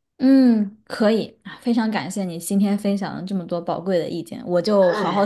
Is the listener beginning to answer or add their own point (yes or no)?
no